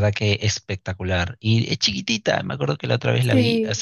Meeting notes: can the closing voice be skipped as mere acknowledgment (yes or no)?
yes